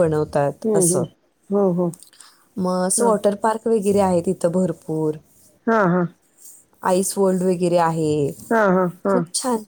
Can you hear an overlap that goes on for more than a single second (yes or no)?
no